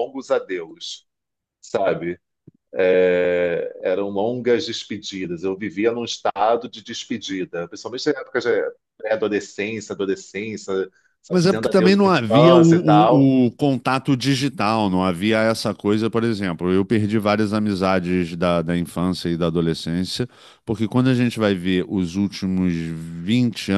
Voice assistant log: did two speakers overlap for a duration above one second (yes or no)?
yes